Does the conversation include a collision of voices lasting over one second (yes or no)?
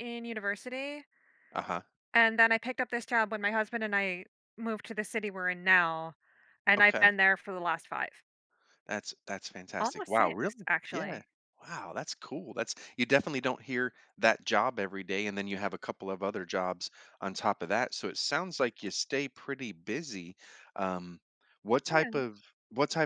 yes